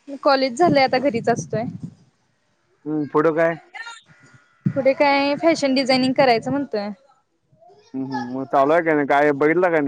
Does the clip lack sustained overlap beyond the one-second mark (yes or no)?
yes